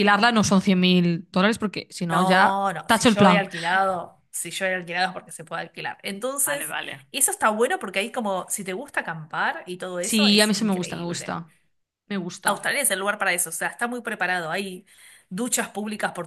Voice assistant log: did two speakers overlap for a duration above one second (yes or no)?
yes